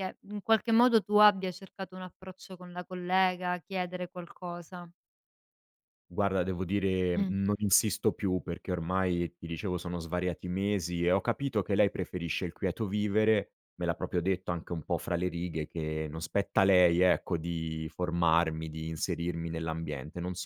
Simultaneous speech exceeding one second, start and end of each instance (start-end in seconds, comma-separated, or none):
none